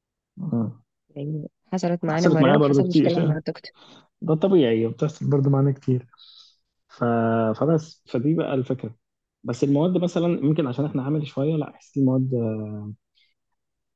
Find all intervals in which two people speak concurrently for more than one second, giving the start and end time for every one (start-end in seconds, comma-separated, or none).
2.1-3.4